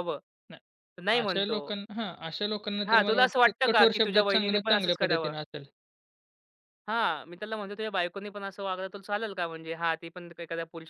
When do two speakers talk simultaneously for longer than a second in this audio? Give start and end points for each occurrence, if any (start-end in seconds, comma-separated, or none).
2.9-5.3